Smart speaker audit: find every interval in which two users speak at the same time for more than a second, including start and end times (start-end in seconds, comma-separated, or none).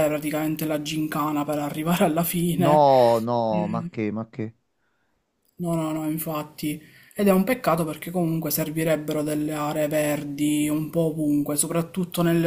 none